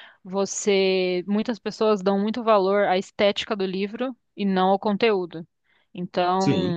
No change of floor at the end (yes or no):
yes